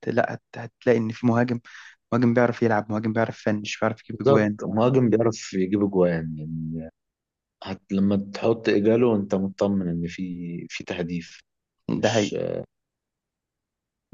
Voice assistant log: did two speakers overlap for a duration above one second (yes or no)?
no